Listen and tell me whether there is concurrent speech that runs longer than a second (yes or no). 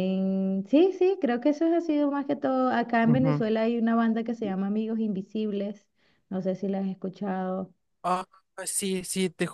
no